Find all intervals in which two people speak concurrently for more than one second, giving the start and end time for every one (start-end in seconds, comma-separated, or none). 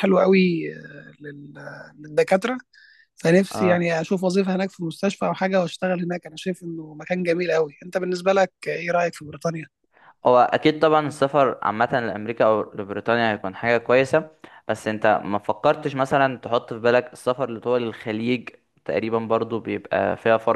none